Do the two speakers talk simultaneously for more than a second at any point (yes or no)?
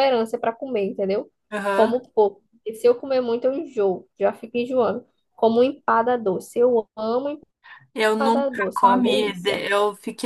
yes